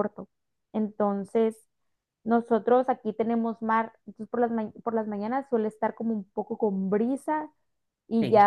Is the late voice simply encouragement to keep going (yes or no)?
yes